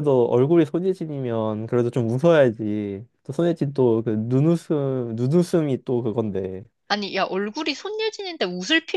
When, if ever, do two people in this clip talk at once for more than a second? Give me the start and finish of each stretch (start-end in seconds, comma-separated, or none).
none